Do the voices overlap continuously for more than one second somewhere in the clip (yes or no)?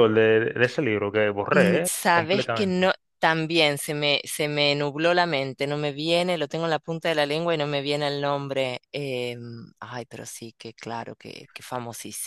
yes